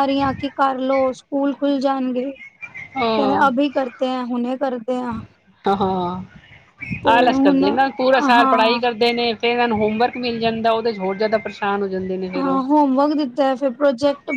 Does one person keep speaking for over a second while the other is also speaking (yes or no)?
no